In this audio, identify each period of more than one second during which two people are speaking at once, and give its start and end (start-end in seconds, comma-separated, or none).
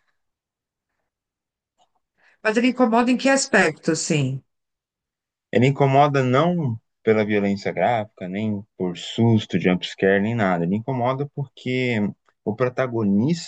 none